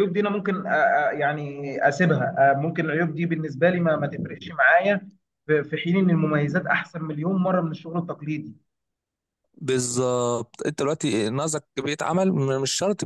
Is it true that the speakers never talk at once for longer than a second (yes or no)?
yes